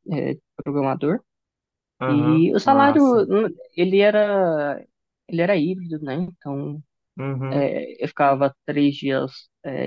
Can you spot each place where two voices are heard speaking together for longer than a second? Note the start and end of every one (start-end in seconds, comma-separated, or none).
2.0-3.2